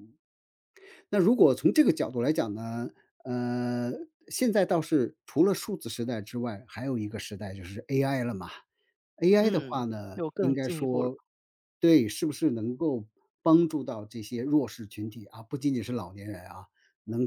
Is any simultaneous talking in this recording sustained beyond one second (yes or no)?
yes